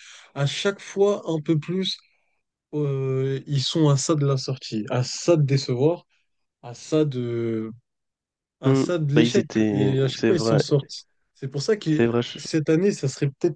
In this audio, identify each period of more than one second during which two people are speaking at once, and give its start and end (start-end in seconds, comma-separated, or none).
8.6-10.6